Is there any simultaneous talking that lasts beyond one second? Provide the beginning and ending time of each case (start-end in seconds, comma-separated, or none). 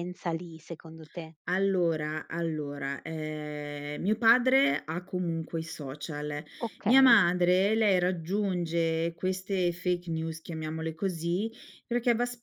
none